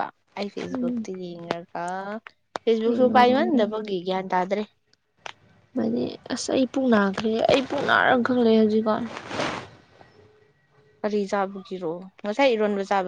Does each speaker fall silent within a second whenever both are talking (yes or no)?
yes